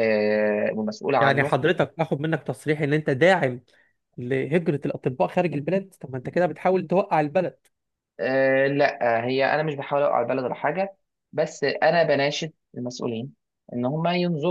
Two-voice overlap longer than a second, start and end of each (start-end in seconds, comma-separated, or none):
none